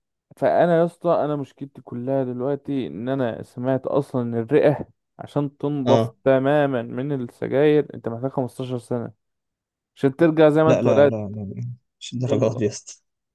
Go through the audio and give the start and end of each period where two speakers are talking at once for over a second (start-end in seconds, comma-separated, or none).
none